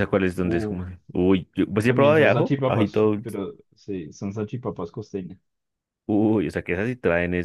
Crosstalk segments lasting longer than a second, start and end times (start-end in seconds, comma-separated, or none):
1.9-3.4